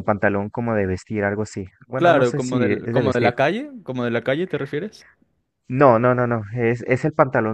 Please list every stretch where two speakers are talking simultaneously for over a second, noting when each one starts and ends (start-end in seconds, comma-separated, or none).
1.9-3.3